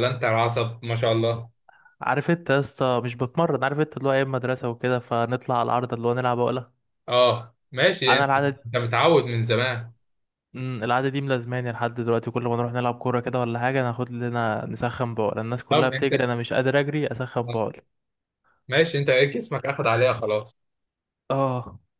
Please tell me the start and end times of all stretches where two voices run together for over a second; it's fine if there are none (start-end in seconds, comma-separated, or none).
none